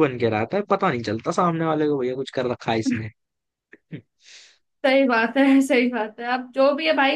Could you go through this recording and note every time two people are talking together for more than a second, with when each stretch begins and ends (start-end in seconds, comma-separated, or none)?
none